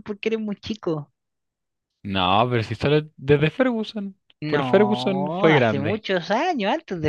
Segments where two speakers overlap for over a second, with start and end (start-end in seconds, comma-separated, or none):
4.4-6.0